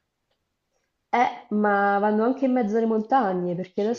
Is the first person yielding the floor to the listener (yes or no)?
no